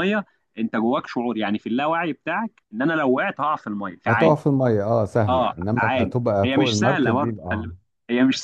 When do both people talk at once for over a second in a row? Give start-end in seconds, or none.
5.3-7.7